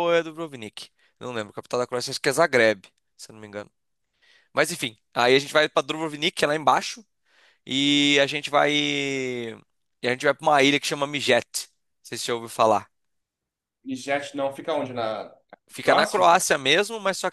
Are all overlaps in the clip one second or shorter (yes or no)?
yes